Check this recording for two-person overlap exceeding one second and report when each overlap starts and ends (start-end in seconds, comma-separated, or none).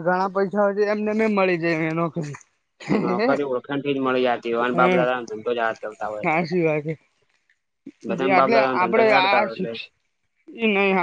8.1-9.7